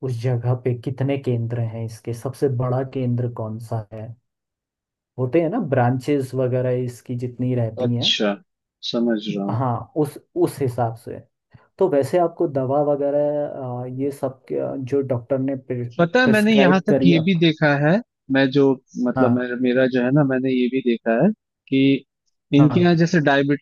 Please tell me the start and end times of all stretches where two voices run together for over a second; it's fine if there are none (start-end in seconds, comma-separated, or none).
16.0-17.4